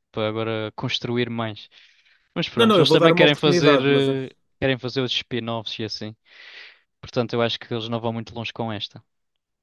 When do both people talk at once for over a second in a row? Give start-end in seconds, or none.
2.6-4.3